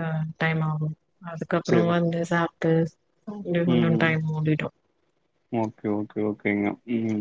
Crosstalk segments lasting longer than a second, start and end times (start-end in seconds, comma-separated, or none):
none